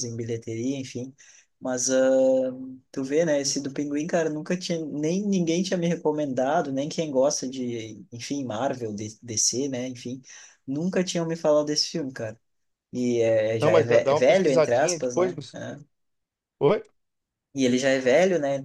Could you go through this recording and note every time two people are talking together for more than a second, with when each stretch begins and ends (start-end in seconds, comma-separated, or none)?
13.6-15.6